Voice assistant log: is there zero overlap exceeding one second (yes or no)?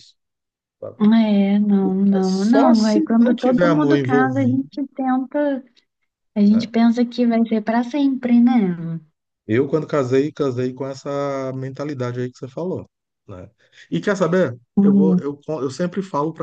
no